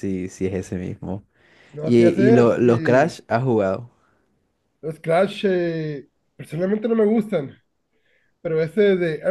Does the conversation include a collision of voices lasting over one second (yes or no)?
yes